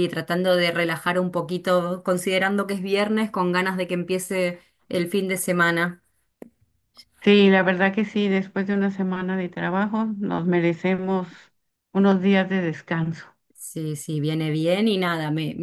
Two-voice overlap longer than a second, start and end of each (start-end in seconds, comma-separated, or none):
none